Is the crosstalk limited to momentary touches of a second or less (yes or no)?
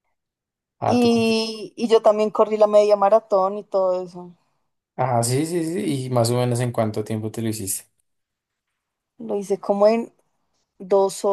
yes